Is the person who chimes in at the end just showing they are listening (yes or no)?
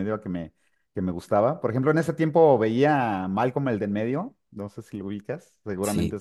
no